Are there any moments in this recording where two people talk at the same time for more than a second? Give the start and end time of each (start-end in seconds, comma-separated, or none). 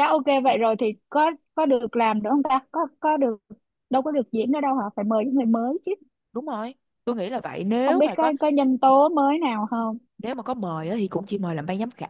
none